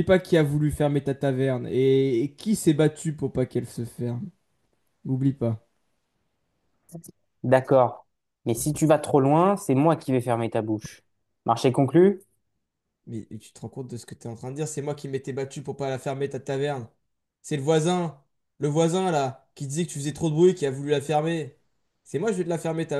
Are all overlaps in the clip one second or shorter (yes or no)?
yes